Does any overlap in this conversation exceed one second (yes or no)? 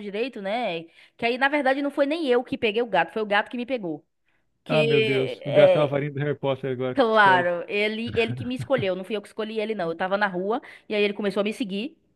yes